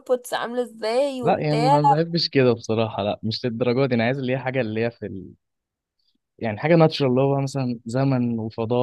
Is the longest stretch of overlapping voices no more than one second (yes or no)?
yes